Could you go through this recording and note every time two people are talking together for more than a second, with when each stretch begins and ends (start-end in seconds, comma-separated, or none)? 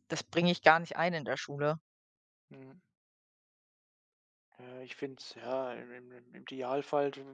none